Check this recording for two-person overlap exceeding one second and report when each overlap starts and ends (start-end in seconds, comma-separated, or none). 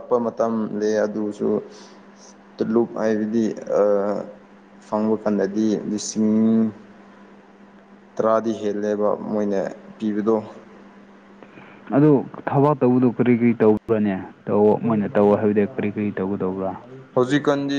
none